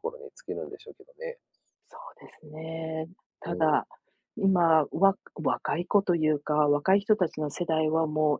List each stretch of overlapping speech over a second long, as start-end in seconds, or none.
none